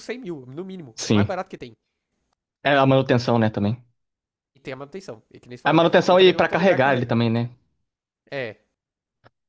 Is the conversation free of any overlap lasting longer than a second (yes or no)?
no